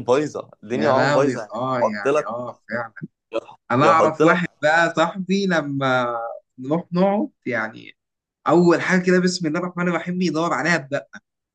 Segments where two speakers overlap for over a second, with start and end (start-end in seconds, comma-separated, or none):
0.7-2.3